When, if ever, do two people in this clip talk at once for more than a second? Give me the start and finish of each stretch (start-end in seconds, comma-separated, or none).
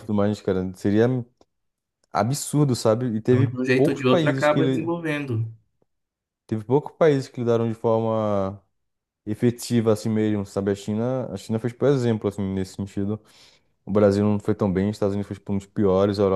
3.2-4.9